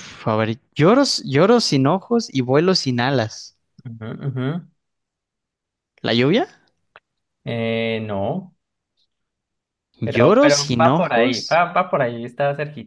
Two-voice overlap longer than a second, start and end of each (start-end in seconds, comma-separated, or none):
10.0-11.6